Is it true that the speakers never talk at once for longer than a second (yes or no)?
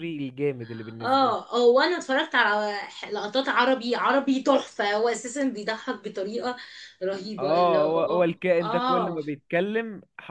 no